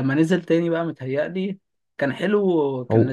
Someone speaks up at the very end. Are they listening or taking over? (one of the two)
listening